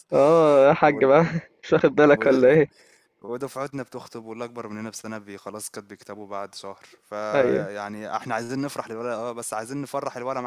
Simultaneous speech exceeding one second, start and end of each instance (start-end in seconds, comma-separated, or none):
none